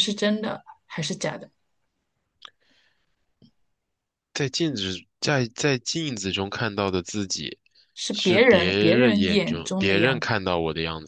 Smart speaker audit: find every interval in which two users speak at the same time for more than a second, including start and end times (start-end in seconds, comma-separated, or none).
8.1-10.3